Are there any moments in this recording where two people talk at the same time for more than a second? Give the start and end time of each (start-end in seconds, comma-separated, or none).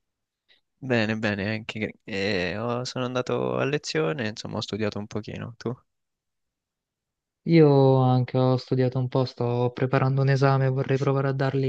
none